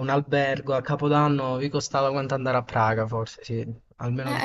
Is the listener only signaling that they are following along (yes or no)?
no